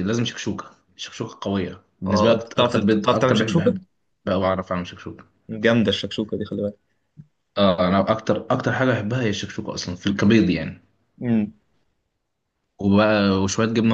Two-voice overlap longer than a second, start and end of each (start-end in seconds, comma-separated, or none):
2.1-3.8